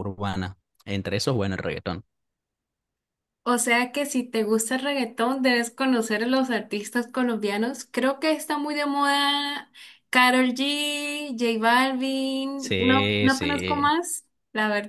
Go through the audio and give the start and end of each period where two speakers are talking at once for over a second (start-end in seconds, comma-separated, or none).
12.6-13.9